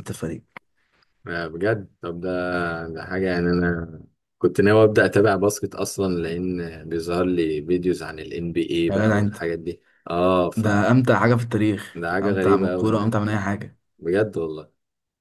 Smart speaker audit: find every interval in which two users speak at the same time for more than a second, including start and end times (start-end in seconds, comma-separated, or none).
11.9-13.4